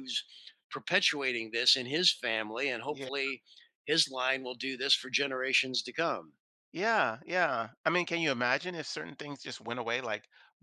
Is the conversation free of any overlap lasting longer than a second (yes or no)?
yes